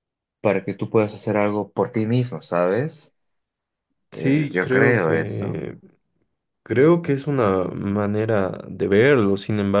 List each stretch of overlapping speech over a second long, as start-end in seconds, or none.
4.1-5.6